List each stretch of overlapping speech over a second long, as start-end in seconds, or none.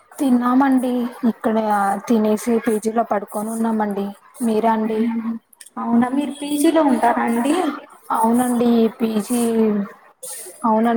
none